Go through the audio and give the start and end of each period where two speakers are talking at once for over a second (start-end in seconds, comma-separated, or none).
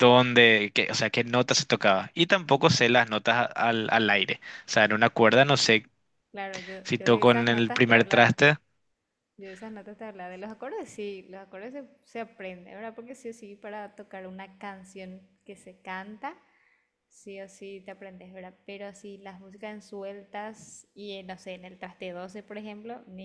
6.8-8.4